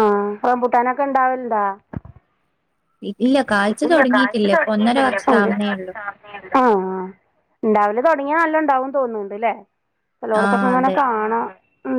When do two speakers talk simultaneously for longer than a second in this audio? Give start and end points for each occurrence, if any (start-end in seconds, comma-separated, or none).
none